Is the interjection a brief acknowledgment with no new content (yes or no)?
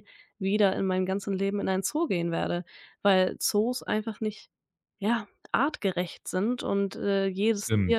yes